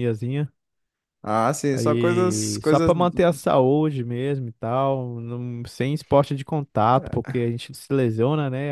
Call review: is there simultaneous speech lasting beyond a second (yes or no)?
yes